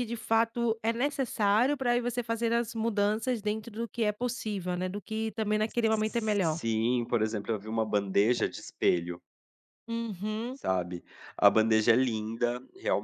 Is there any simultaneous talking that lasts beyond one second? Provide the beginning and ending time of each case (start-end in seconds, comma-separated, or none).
none